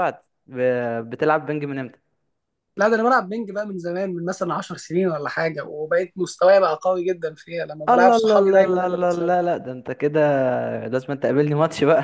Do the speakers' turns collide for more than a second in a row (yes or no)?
yes